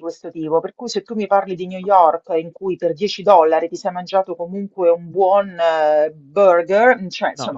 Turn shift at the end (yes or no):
yes